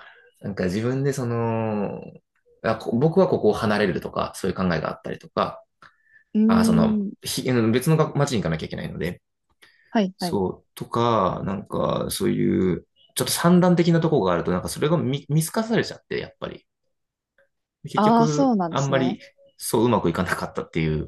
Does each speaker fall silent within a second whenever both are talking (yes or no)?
no